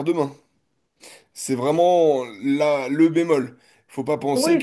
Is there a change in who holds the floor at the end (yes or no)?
yes